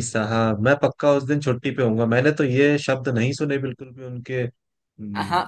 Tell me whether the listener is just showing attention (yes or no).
no